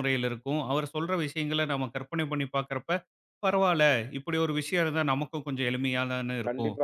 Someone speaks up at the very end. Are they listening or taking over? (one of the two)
taking over